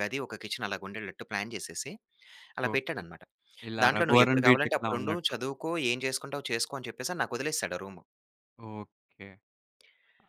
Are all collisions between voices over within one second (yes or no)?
no